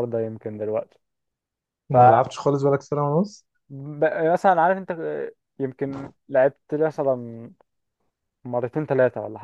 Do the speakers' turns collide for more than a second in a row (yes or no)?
no